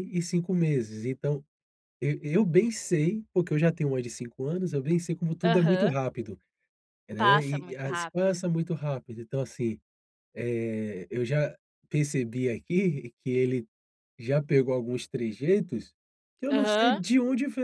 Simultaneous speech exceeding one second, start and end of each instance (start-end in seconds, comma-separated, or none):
7.2-8.4